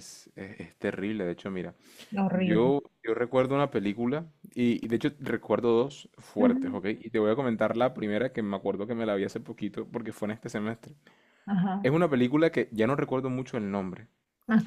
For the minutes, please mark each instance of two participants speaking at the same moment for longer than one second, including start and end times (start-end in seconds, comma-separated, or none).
none